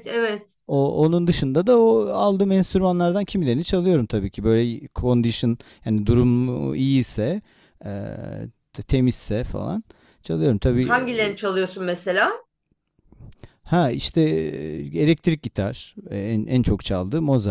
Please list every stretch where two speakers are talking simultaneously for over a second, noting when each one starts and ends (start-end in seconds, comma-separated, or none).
none